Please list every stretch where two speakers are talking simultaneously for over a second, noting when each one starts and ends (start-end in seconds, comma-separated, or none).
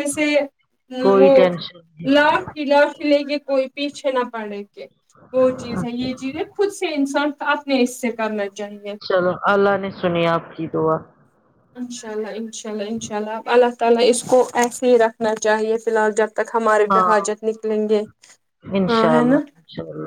none